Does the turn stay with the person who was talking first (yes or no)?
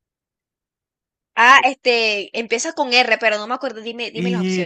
no